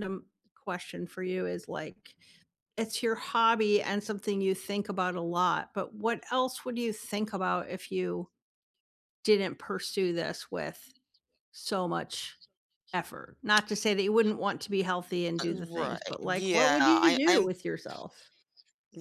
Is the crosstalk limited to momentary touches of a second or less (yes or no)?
no